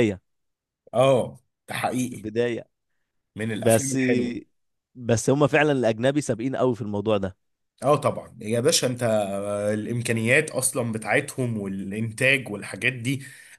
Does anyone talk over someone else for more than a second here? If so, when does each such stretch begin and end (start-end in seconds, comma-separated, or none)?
none